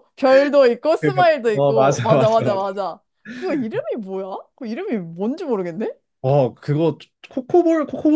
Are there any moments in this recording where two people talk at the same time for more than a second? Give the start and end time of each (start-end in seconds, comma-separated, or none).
1.0-2.6